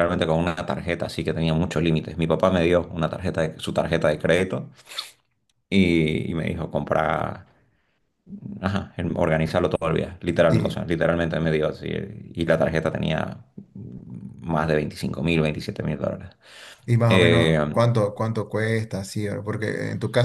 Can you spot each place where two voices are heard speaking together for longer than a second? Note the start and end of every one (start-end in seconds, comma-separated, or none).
none